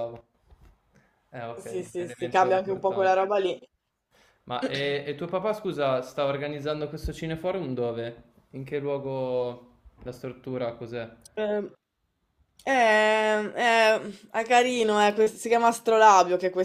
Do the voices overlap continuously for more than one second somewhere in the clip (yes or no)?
yes